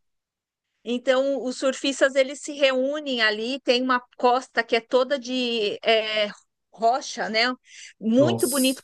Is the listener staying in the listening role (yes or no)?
yes